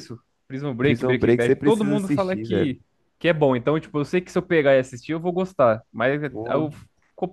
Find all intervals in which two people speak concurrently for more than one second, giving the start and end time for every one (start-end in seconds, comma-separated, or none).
0.8-2.7